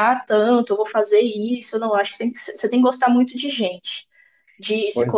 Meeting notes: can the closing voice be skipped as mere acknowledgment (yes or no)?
yes